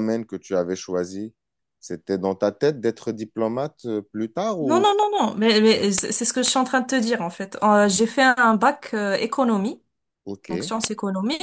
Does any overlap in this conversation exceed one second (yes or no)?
no